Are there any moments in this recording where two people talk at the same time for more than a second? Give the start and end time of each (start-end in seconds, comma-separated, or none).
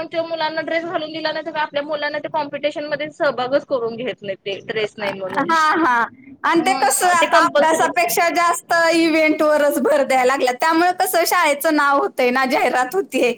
6.7-8.0